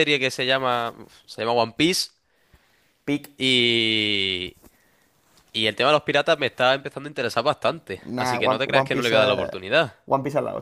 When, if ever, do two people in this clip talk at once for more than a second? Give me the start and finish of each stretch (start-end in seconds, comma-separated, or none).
8.0-9.5